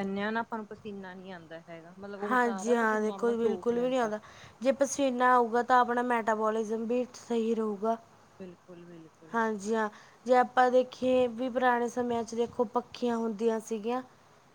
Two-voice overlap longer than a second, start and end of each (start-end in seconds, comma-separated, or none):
2.3-4.1